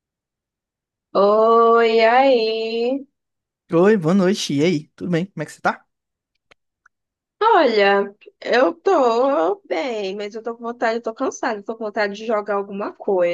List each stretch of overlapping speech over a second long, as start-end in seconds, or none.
none